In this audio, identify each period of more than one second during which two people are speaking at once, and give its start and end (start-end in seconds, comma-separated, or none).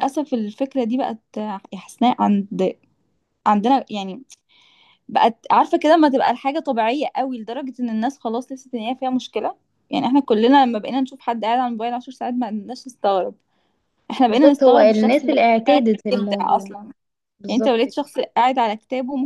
14.3-16.7